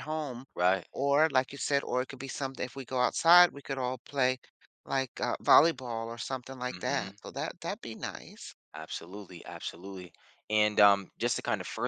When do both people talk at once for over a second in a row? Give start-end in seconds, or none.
none